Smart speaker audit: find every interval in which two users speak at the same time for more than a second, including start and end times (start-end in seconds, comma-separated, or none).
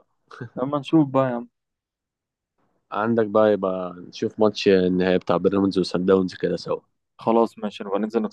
none